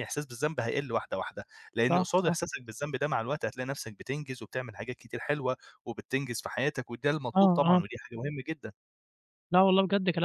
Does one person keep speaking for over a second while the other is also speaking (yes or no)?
no